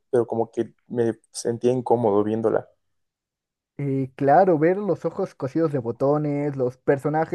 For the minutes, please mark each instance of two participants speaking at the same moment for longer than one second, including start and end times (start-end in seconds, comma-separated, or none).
none